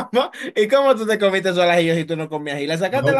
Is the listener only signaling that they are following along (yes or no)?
no